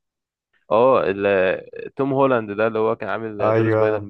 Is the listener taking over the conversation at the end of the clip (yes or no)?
yes